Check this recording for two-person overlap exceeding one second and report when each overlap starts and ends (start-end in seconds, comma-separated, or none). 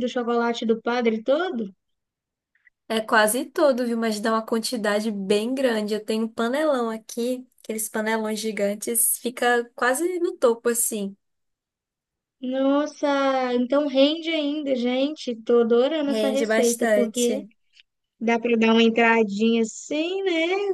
16.1-17.4